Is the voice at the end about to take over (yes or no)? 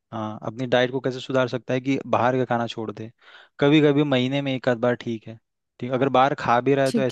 no